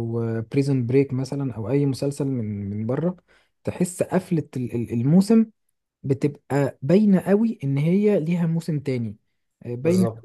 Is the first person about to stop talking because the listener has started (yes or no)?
no